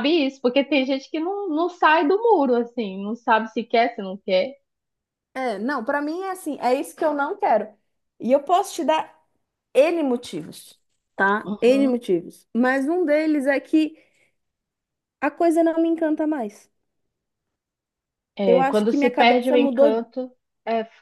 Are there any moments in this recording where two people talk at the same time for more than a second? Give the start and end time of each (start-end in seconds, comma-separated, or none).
18.4-20.0